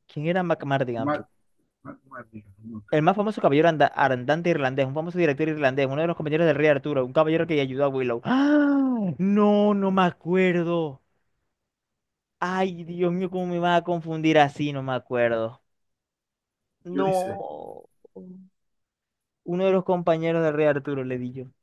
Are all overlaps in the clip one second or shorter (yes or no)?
yes